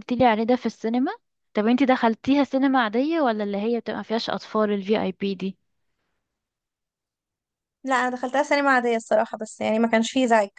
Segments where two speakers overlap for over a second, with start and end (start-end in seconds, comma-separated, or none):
none